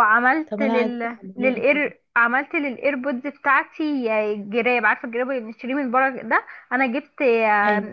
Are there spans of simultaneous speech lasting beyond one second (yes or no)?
yes